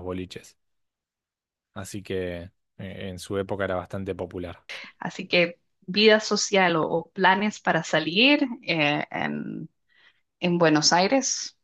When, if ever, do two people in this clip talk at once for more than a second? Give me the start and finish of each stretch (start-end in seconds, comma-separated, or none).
none